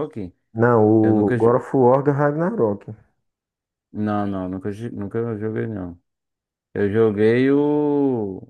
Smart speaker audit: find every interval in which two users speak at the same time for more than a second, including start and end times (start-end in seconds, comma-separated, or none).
none